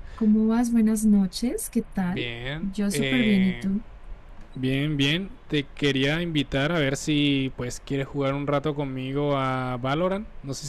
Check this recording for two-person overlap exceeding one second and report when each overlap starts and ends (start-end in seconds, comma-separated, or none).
2.1-3.7